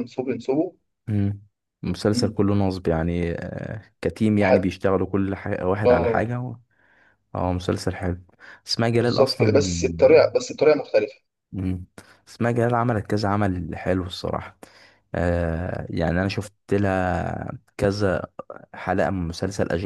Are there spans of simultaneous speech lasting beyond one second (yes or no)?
yes